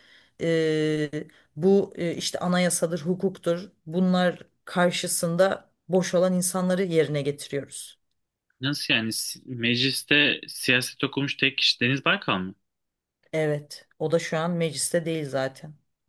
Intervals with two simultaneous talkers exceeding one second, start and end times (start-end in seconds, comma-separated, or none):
none